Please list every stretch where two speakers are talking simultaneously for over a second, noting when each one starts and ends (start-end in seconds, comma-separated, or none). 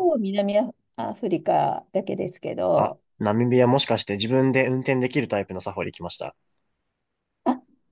none